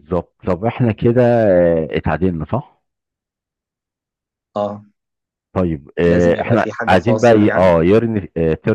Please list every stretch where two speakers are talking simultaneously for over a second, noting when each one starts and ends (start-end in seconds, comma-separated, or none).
6.0-7.7